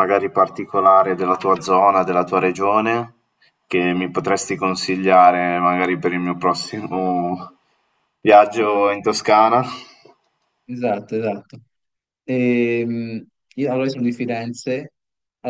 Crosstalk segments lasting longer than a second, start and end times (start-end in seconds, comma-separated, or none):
none